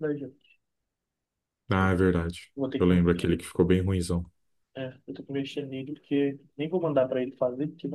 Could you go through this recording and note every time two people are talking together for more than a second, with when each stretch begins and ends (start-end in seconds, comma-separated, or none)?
none